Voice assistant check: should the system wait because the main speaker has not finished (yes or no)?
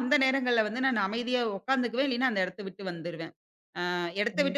yes